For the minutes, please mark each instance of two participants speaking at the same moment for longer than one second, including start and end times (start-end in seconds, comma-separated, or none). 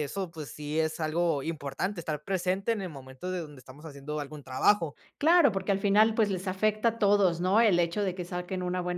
none